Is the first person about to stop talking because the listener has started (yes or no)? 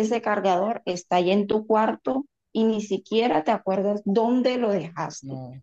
no